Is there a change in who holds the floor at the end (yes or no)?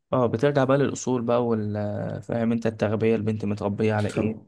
yes